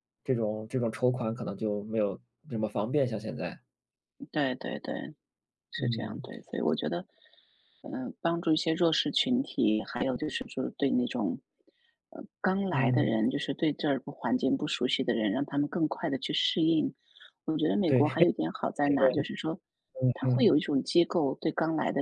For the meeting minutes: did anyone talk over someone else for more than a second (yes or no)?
no